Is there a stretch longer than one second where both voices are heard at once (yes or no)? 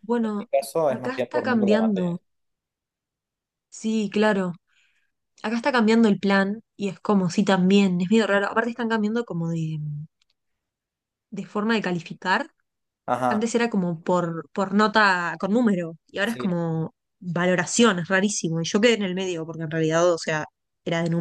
yes